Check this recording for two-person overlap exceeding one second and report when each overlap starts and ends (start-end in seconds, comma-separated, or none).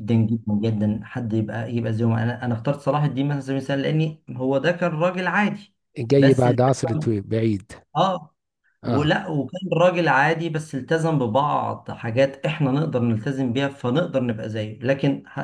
none